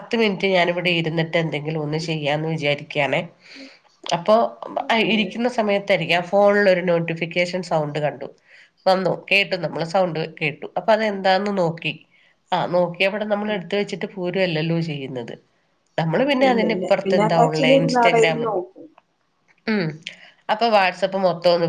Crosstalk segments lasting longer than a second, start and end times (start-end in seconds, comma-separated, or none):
16.5-18.4